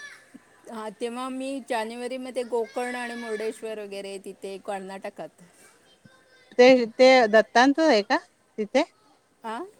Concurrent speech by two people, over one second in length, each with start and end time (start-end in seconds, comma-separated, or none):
none